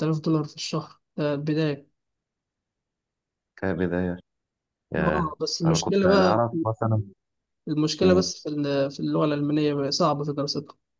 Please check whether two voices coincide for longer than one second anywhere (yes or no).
yes